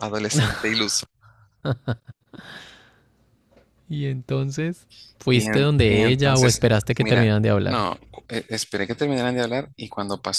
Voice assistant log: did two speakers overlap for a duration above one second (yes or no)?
yes